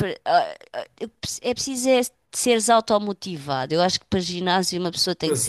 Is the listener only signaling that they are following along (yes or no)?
yes